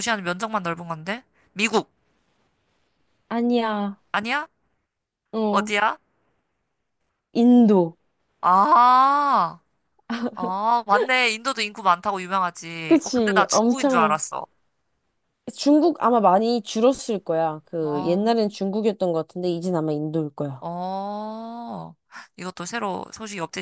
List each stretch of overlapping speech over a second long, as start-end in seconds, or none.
12.9-14.2